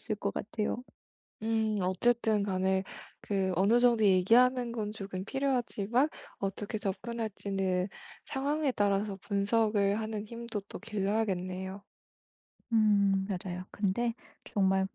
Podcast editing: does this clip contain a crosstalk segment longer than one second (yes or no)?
no